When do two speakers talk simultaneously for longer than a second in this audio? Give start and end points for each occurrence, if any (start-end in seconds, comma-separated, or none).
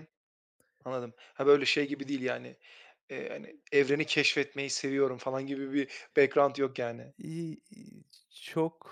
none